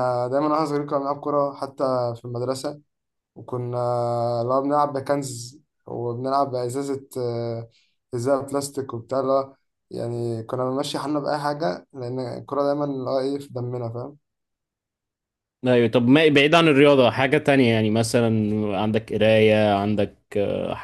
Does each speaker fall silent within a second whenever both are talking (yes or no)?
yes